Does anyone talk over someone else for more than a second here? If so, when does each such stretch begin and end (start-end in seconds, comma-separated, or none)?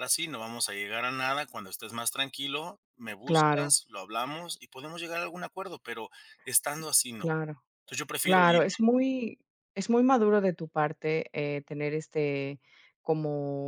none